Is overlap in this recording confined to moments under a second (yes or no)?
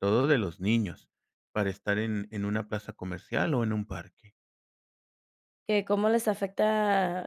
yes